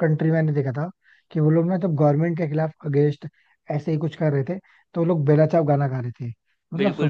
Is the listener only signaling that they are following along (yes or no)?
yes